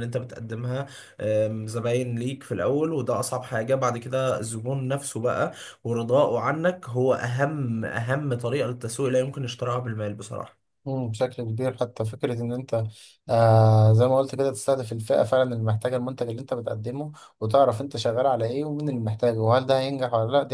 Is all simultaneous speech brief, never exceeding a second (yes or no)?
yes